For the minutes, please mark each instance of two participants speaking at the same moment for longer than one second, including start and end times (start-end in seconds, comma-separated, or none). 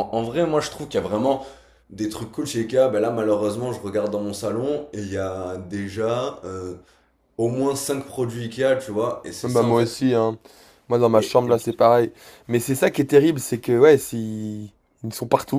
none